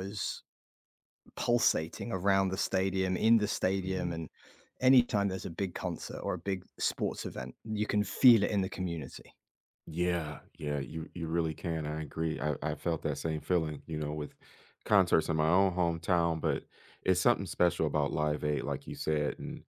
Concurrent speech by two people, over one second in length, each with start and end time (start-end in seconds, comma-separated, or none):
none